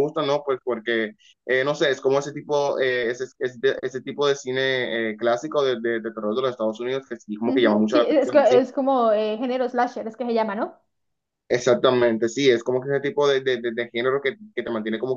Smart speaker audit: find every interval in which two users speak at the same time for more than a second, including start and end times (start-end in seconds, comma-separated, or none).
7.4-8.7